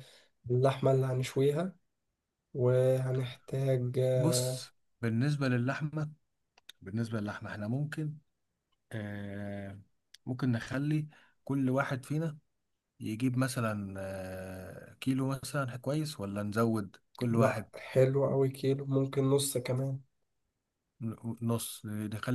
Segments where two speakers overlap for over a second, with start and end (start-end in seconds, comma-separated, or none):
none